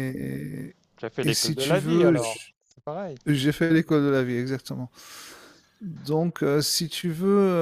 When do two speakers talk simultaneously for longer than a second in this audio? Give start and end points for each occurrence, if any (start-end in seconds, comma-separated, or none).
1.2-2.5